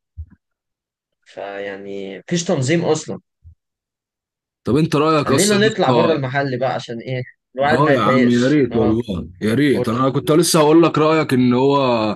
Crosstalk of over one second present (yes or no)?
yes